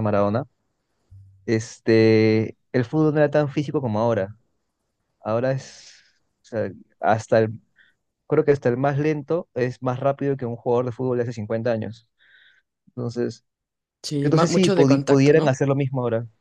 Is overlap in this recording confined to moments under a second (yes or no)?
no